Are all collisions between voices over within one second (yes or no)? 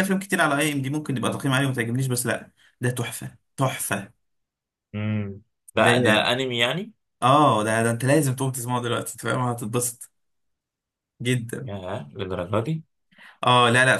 yes